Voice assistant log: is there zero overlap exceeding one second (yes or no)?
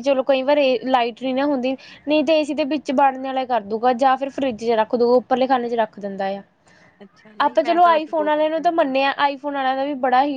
no